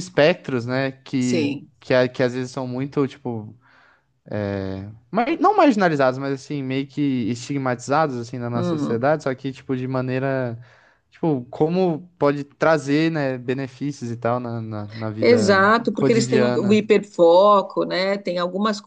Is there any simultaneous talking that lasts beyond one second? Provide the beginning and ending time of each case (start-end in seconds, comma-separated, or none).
15.2-16.8